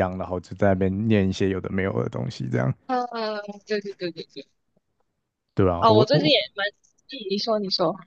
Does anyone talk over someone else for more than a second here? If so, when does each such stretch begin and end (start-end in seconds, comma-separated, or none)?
none